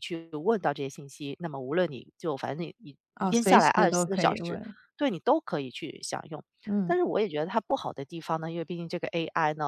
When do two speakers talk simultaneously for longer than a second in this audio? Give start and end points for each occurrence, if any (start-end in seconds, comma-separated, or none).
3.1-4.6